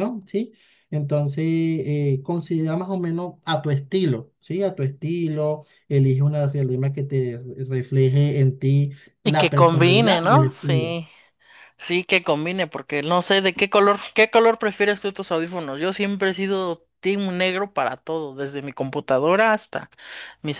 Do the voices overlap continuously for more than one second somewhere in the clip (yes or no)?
yes